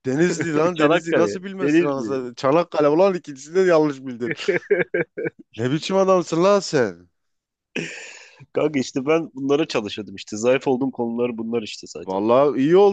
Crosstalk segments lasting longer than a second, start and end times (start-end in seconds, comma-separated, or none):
0.8-2.3